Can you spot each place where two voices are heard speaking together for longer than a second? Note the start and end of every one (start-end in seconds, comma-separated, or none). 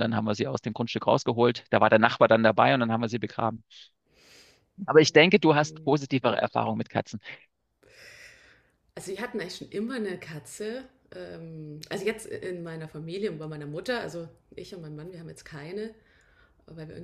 none